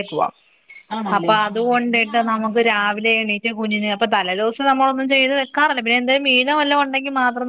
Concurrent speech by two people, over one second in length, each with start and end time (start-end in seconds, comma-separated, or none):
1.2-2.9